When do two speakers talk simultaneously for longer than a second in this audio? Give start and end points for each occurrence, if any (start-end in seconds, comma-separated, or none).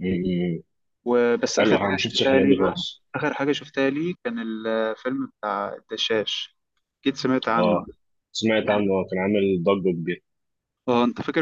1.6-3.0